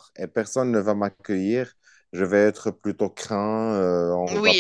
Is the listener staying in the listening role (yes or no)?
no